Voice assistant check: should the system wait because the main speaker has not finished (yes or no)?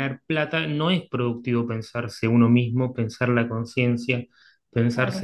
yes